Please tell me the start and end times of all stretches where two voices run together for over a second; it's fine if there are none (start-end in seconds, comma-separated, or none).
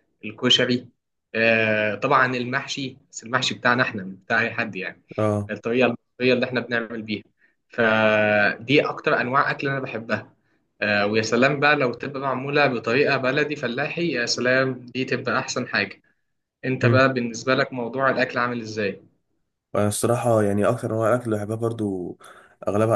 none